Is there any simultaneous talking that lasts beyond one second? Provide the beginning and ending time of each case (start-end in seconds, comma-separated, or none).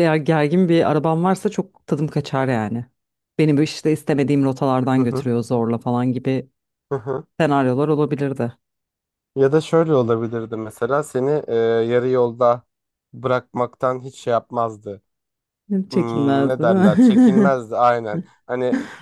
15.9-17.6